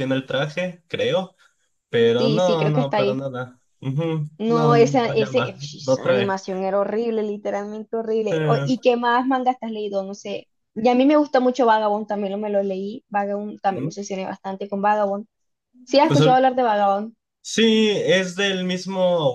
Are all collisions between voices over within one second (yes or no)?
no